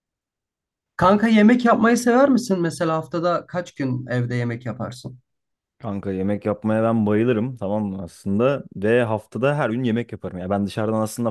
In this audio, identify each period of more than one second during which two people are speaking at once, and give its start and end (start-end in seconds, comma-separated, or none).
none